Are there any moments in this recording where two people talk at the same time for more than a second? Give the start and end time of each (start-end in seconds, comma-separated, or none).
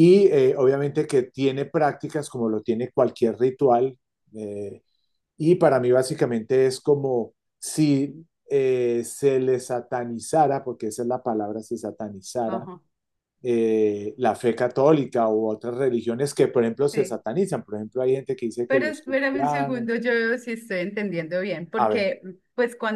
18.7-20.0